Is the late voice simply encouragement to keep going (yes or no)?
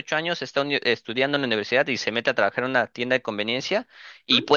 yes